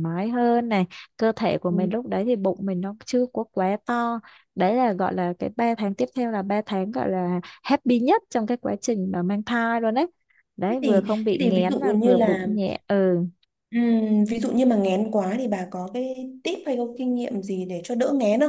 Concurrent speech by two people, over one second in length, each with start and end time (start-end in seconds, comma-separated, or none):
10.7-12.5